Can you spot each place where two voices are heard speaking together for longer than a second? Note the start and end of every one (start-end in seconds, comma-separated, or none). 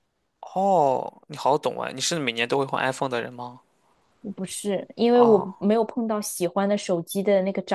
none